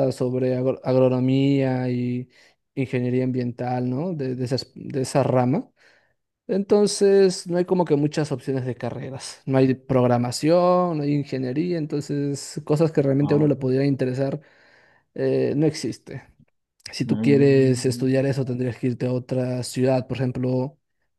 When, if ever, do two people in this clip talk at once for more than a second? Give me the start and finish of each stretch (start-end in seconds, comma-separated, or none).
17.0-18.4